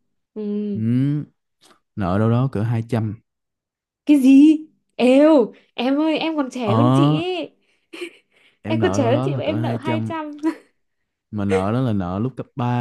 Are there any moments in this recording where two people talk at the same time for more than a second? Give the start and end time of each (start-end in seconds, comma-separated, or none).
8.7-10.1